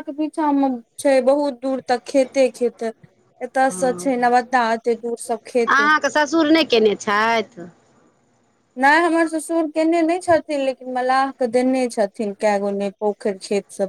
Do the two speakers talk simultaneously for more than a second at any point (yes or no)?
no